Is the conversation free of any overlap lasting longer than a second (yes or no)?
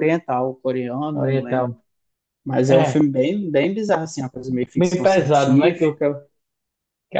no